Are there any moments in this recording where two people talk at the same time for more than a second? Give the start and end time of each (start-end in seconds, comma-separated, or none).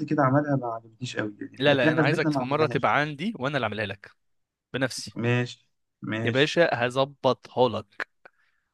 1.6-2.9